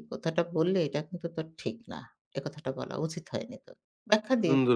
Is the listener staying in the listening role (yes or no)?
no